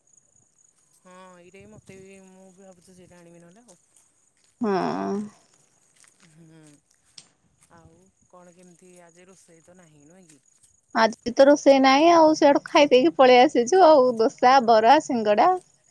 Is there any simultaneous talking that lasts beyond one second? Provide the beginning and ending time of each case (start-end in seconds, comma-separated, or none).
none